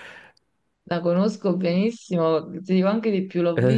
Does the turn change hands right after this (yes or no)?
no